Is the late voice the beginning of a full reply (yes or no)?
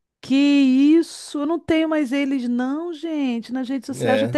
yes